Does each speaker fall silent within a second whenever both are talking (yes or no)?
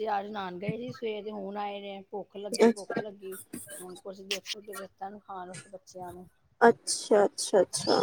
yes